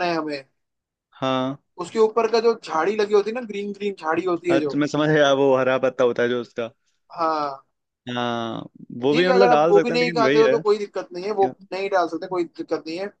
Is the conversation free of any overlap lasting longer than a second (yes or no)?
no